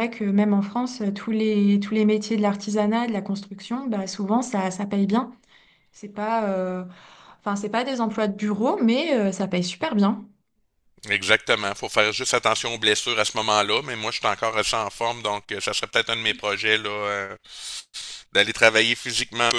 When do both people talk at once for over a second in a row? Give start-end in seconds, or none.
none